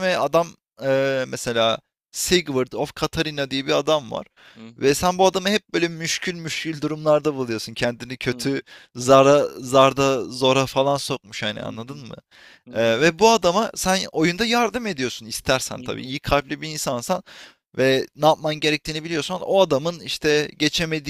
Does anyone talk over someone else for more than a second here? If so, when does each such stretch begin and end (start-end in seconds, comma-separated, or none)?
none